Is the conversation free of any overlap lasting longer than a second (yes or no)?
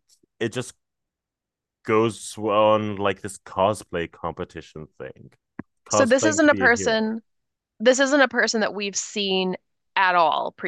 no